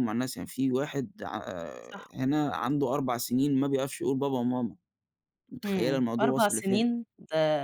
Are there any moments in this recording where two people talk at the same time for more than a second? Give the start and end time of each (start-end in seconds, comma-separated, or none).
5.6-6.8